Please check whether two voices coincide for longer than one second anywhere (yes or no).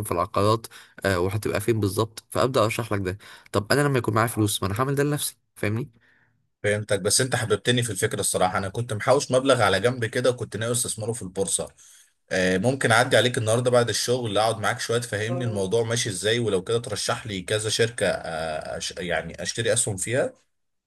no